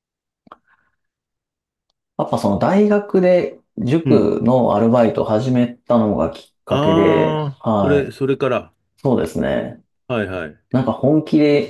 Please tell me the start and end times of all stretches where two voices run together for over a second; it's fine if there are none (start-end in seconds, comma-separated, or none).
6.7-8.2